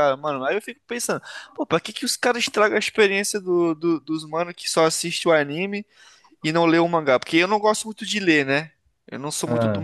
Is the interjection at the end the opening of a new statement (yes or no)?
no